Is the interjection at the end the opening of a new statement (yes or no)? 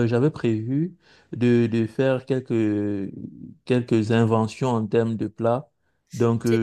no